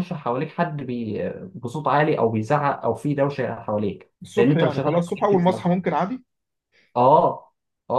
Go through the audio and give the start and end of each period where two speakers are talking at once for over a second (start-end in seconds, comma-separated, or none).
4.2-5.5